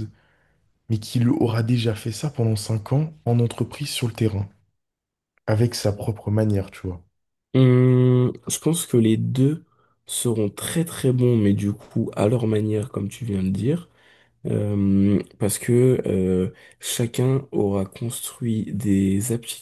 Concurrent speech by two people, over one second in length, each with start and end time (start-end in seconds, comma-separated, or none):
none